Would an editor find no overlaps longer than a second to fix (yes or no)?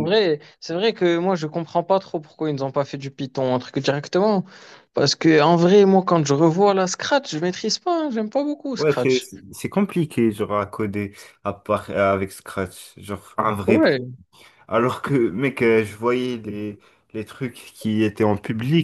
yes